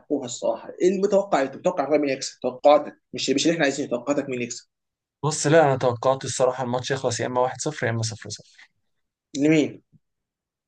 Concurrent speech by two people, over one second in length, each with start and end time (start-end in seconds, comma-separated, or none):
none